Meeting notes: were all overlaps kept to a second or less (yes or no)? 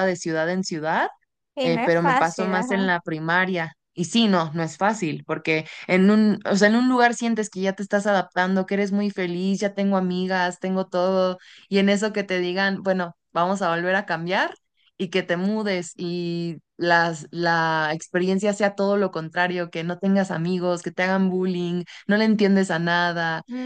no